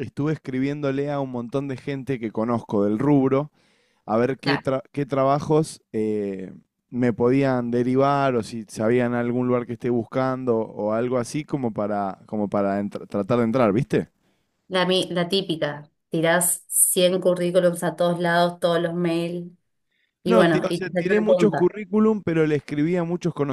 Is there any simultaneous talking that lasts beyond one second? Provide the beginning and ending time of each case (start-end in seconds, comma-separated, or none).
20.2-21.7